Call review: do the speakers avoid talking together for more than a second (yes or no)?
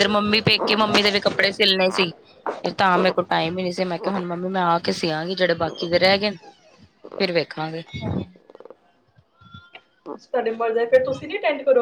yes